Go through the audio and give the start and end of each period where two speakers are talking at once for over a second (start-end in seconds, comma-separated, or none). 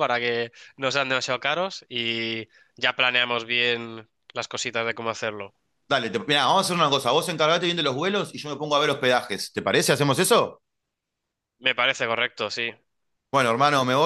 none